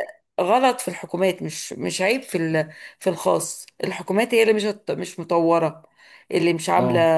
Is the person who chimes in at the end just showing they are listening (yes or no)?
no